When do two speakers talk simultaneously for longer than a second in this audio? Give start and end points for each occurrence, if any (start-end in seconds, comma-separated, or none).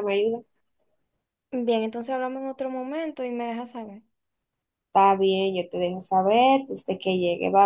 none